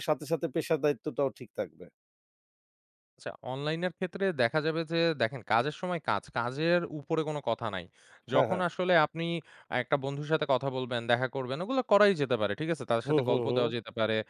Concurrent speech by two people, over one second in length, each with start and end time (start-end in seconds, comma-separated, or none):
none